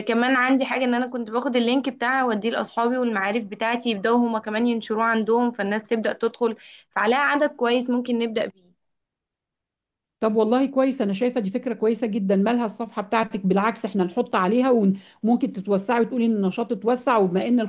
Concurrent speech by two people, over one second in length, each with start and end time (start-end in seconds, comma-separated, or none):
none